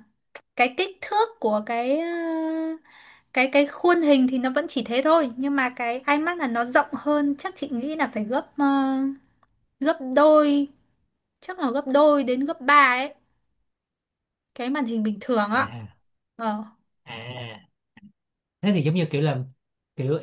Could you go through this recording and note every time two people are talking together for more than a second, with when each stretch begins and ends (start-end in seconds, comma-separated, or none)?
none